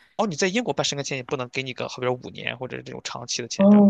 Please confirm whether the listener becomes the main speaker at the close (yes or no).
yes